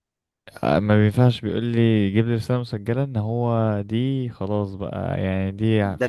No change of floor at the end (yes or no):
no